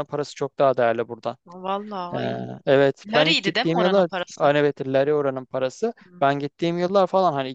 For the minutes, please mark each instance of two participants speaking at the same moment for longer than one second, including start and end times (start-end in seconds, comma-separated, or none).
3.1-4.5